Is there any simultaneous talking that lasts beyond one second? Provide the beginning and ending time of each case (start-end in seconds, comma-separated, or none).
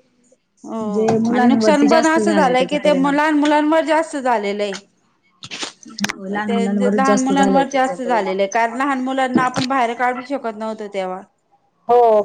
1.3-3.2, 6.5-8.3